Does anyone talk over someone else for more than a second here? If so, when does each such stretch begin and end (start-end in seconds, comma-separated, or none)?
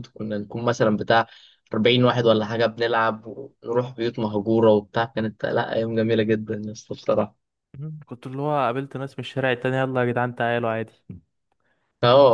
none